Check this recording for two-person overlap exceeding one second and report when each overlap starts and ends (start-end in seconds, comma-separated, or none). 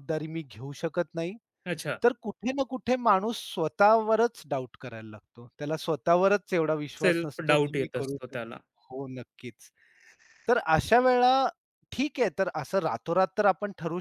7.0-8.5